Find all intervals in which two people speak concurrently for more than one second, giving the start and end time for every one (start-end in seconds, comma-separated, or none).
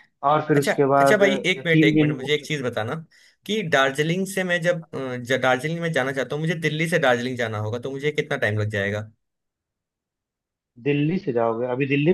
0.6-2.7